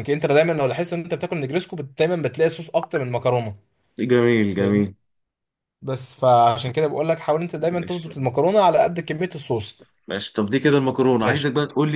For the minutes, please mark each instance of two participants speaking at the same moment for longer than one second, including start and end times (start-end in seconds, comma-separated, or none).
none